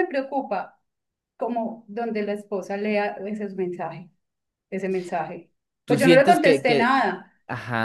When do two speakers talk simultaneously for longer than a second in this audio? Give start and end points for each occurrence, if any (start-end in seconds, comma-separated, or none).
5.9-7.3